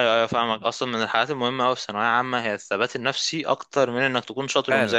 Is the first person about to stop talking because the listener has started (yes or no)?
yes